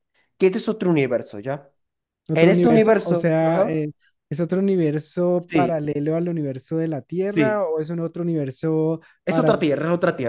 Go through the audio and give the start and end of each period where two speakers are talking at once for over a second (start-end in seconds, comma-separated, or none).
2.3-3.9